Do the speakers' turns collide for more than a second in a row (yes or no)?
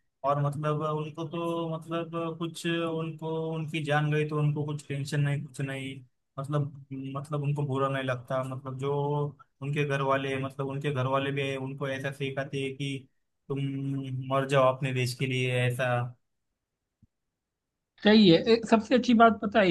no